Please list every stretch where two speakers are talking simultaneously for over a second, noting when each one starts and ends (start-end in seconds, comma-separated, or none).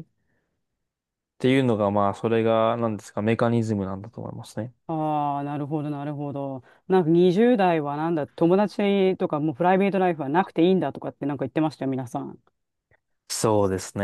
none